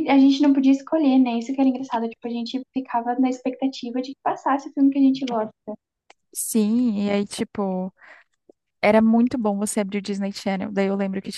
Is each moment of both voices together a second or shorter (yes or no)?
yes